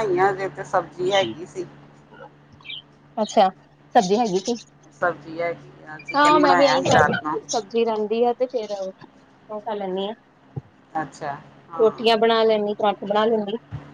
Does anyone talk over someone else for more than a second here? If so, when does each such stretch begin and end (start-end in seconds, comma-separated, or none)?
6.1-7.4